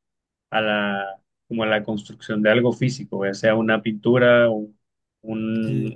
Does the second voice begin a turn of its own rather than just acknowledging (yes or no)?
no